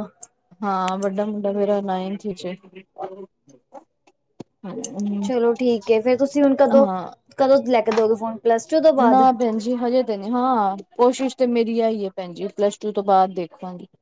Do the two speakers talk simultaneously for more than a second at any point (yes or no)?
no